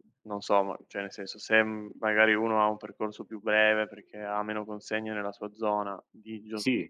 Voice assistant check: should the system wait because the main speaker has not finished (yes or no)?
yes